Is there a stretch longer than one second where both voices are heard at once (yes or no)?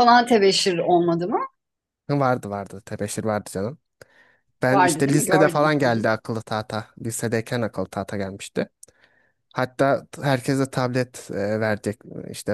yes